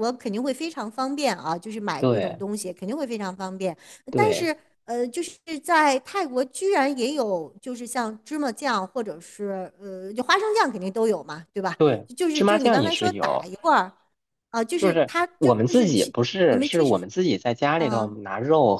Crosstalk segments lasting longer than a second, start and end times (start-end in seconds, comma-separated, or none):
12.2-13.5, 14.8-17.1